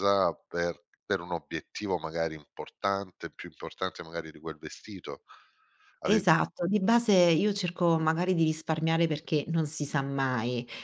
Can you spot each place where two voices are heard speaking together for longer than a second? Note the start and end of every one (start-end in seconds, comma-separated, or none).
none